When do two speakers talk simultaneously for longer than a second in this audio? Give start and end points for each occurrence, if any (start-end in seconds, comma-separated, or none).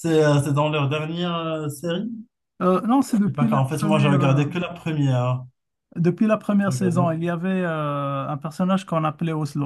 3.3-4.5